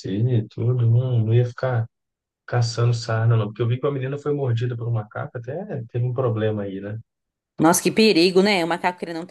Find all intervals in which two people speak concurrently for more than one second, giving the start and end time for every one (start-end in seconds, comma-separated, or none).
none